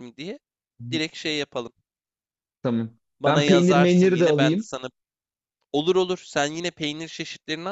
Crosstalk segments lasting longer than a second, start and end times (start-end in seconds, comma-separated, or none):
3.2-4.7